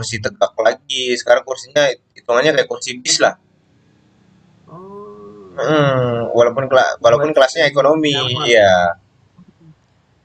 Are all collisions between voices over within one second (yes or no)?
no